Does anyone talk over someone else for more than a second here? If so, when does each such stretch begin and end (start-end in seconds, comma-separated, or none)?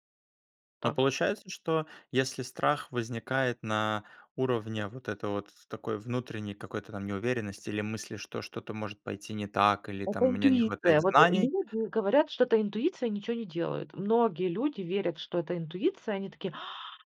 10.0-11.5